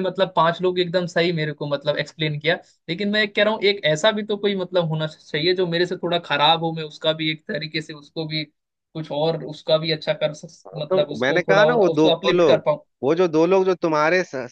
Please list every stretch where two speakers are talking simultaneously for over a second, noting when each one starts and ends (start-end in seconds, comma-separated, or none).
10.9-12.6